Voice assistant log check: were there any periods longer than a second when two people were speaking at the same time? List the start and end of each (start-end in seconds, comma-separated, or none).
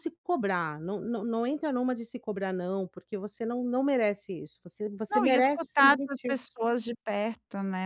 5.1-6.4